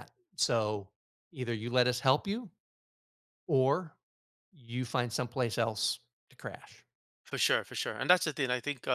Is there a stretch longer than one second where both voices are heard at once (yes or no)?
no